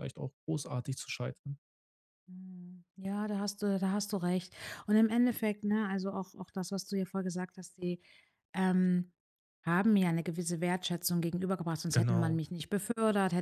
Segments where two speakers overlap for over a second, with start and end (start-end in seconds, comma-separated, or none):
none